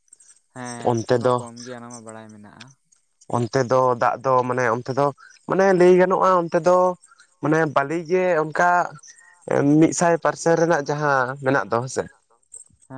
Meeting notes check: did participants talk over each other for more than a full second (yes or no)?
yes